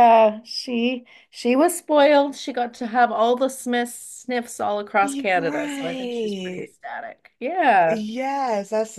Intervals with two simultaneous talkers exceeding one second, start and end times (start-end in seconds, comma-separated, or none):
5.0-6.7